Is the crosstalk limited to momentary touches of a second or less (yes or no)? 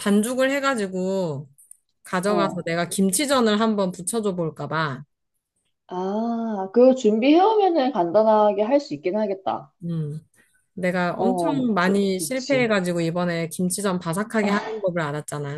no